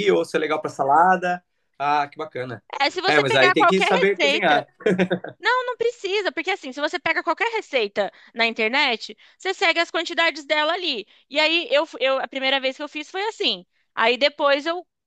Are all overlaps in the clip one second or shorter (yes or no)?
no